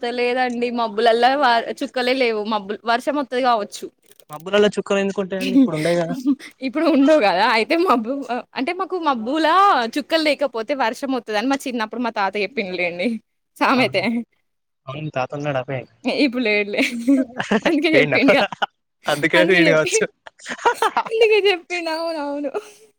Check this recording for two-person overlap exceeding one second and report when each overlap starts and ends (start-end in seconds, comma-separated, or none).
none